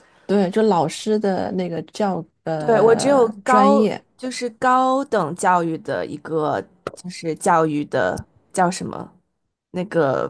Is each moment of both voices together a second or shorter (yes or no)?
no